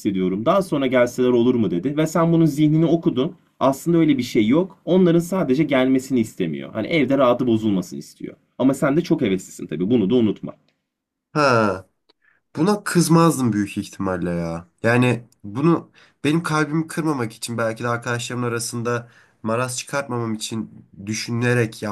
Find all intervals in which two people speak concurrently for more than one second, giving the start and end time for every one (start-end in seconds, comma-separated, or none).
none